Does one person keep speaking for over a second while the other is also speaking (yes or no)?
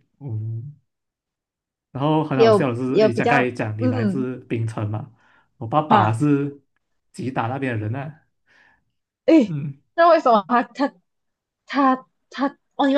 yes